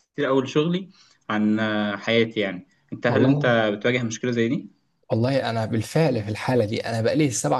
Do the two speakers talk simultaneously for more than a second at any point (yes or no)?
no